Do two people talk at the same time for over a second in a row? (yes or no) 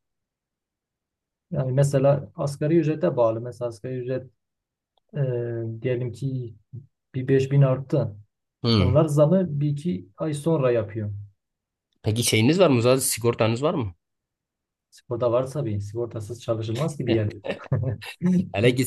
no